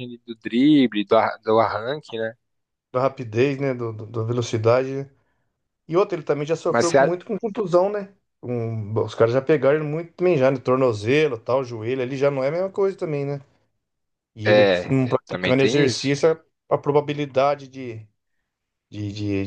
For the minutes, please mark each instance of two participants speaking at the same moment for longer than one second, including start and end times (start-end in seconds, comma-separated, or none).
14.4-16.1